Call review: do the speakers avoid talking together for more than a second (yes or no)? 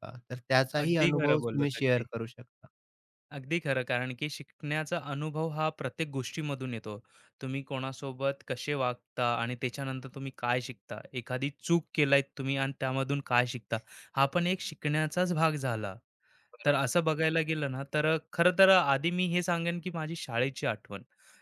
no